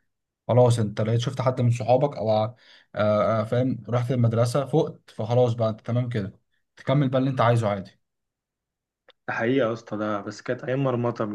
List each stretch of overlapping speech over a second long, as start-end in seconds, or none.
none